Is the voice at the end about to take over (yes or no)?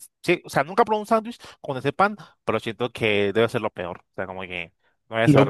yes